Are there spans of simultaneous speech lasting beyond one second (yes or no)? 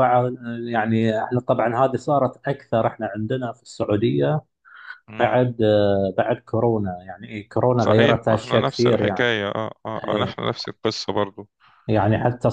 yes